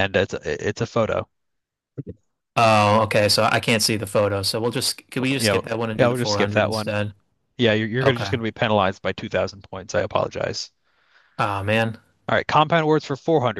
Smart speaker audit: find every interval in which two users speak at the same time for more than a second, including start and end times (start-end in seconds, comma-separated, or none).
5.4-7.0